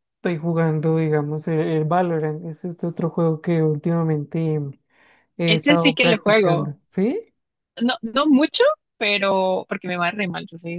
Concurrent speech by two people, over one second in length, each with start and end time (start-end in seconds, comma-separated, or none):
5.5-6.7